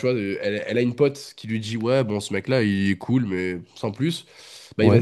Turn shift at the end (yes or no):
no